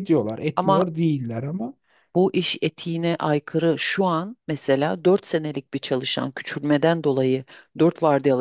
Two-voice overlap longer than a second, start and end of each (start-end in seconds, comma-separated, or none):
none